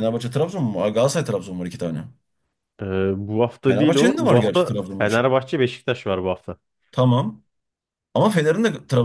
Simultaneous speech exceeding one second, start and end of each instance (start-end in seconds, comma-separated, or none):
3.7-5.2